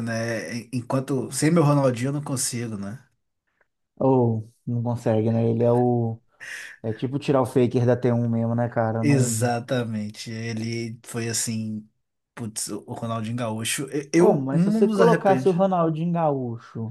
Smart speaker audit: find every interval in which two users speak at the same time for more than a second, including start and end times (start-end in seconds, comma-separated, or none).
14.2-15.6